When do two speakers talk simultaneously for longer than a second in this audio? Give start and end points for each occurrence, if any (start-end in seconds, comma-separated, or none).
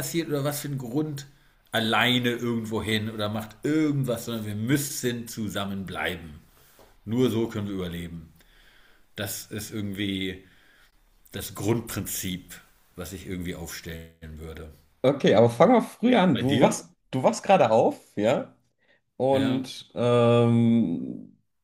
none